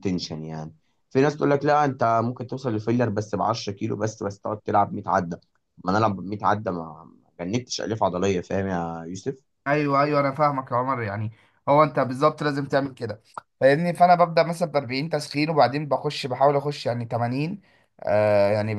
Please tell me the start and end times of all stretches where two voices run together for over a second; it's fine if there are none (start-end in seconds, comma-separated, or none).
none